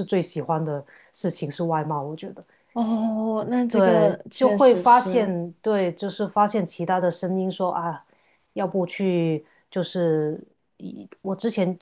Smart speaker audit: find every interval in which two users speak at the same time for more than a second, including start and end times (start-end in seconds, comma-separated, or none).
3.7-5.3